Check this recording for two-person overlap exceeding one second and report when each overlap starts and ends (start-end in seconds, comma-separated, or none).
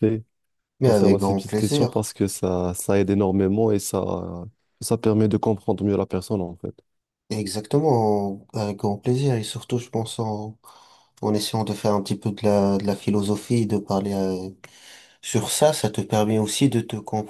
0.8-2.1